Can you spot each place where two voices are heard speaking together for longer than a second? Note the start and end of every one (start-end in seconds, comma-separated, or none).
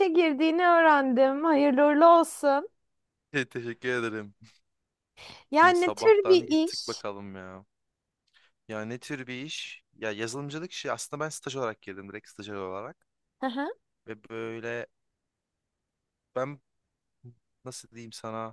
5.6-7.0